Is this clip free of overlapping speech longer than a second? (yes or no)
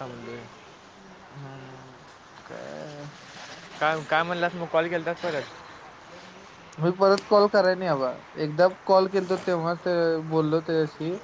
yes